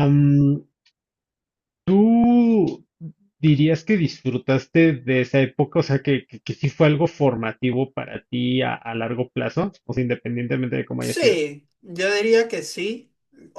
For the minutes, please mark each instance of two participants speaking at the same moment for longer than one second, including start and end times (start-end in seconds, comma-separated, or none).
none